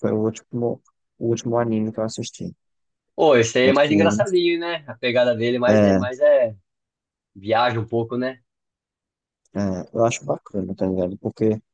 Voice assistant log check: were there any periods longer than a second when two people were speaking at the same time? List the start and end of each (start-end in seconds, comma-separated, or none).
none